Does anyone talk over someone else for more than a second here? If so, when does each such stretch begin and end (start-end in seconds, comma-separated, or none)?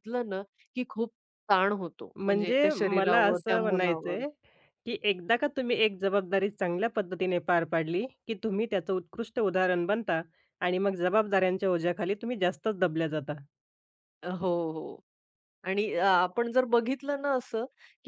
2.1-4.2